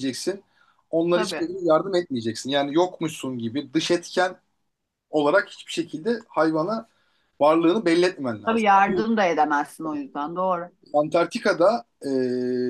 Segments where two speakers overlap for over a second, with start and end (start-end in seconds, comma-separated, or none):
none